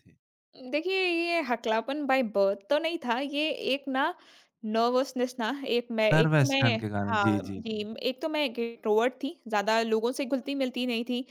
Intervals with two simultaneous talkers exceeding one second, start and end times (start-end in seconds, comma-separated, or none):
6.1-7.8